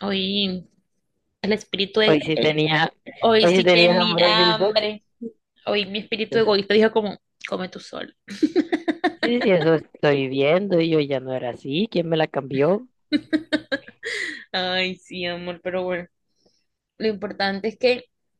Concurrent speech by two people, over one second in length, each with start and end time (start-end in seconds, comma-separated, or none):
3.4-4.7